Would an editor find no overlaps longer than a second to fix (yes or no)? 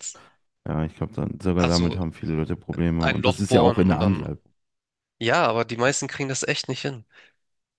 no